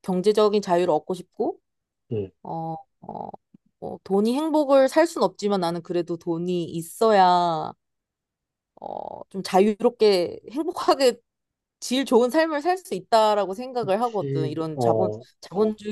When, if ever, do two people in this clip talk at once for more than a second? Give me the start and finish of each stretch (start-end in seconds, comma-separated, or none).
13.8-15.2